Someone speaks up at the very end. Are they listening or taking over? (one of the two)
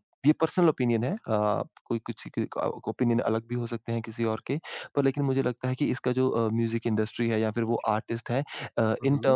listening